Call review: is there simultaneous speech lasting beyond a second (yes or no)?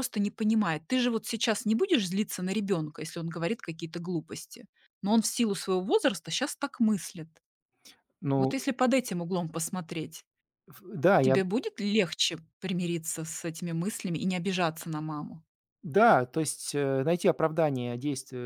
no